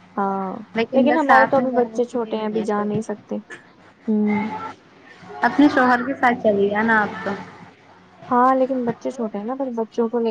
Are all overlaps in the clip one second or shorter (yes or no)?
no